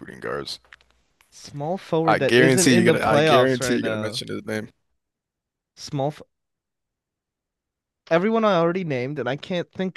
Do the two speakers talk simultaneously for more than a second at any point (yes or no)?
yes